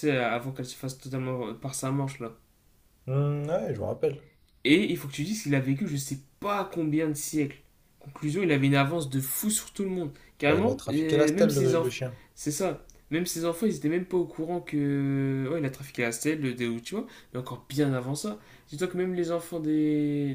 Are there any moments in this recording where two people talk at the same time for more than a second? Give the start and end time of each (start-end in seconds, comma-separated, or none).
10.4-12.0